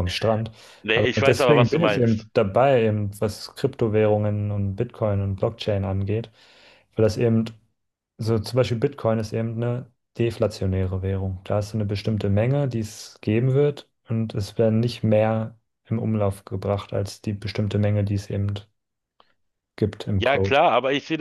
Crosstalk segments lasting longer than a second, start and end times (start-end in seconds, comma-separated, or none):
0.9-2.3